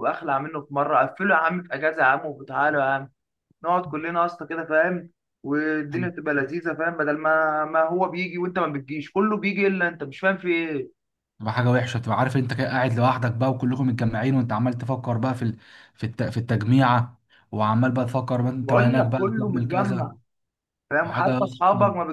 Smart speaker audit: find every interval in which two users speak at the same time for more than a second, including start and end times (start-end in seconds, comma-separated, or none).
18.6-20.1